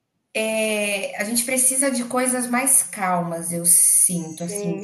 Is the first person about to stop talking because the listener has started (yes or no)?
yes